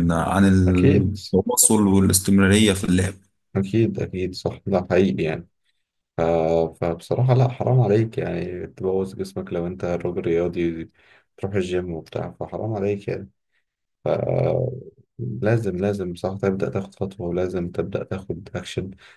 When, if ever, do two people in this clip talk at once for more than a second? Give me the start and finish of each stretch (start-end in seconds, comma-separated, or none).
none